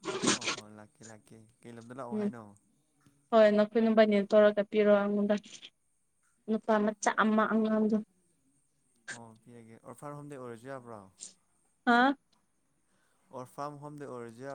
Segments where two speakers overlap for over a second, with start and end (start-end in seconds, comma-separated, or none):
none